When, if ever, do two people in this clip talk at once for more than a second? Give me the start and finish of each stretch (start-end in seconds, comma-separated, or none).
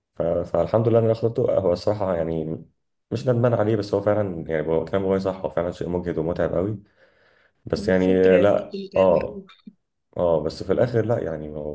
7.8-9.4